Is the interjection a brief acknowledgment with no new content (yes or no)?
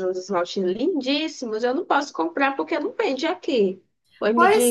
no